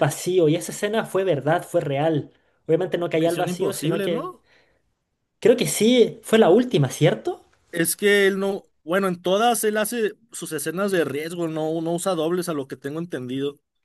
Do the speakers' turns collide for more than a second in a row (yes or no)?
yes